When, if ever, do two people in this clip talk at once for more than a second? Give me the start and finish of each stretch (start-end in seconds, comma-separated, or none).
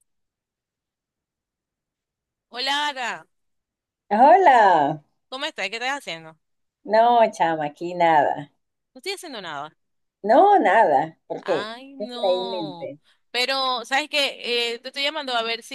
11.4-12.9